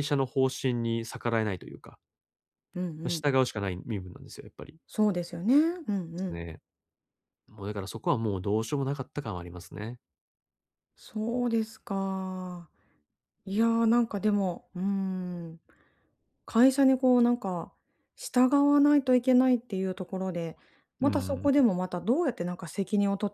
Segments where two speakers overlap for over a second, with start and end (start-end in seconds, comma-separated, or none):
none